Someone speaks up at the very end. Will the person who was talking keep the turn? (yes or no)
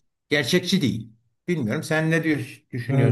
no